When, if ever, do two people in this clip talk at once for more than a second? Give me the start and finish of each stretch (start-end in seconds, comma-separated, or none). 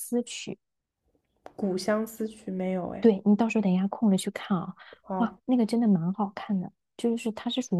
none